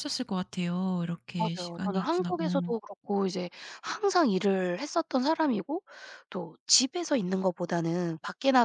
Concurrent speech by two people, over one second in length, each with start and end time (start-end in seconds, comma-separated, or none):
1.4-2.7